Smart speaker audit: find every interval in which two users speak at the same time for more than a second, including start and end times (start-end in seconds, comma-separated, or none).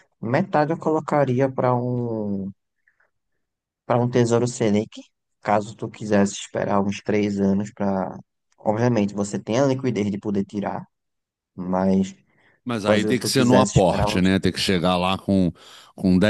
12.8-14.3